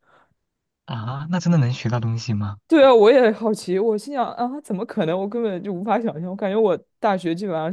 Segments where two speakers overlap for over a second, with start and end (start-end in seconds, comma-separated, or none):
none